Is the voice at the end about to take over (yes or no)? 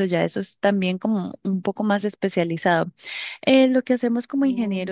no